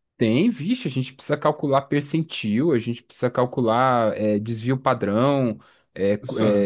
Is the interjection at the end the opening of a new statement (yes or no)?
no